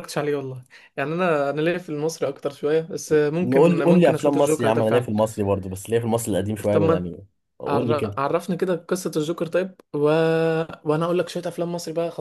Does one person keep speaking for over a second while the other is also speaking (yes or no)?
yes